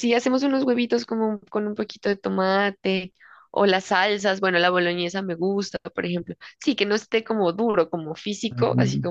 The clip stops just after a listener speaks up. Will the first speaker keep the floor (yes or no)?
no